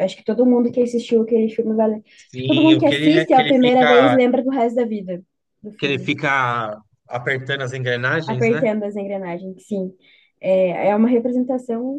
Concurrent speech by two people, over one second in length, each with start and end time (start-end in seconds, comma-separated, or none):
2.1-4.2